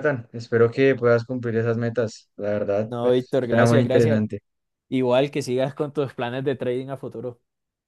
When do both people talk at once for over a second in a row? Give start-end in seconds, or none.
2.9-4.2